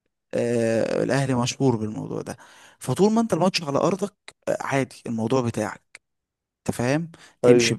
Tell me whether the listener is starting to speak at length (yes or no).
no